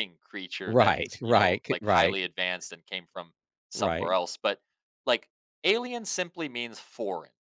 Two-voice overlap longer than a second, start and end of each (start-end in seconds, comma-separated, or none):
0.7-2.2